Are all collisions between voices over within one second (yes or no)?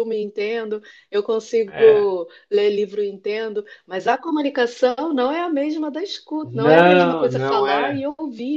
no